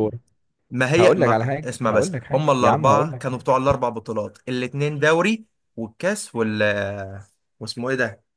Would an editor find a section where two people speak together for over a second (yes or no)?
yes